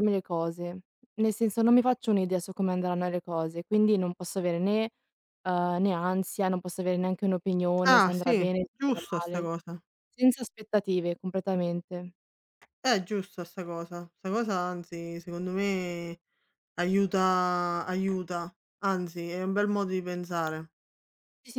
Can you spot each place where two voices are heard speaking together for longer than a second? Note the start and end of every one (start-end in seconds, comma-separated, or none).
7.8-9.5